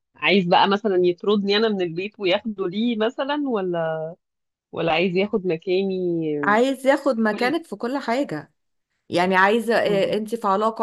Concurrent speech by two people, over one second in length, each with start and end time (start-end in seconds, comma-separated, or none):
none